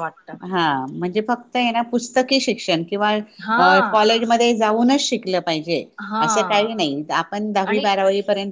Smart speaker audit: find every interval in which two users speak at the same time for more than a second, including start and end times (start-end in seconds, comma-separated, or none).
none